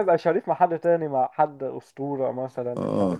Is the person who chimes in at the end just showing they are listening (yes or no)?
no